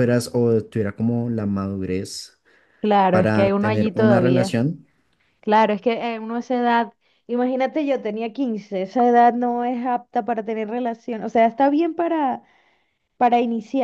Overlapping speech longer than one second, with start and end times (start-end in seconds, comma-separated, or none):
3.1-4.6